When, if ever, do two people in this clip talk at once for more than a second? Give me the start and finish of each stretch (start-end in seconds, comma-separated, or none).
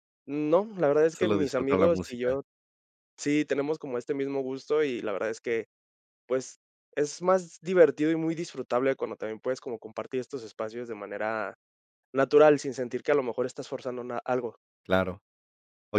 1.1-2.4